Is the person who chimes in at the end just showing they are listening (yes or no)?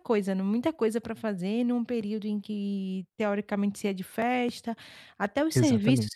yes